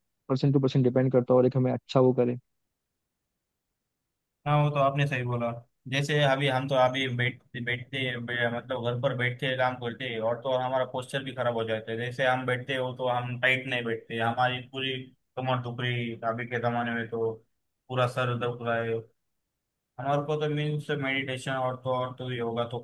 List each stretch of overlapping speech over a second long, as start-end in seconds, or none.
none